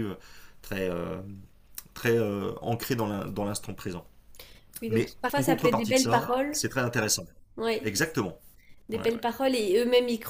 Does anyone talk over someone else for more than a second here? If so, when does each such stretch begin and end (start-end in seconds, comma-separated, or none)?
4.9-6.6